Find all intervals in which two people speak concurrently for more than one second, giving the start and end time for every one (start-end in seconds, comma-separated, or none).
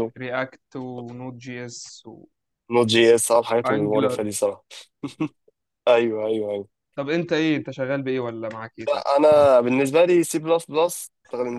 none